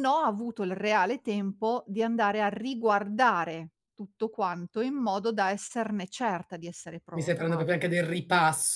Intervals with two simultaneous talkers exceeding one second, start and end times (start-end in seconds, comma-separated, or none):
none